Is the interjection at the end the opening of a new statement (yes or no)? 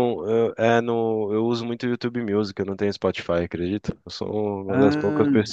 no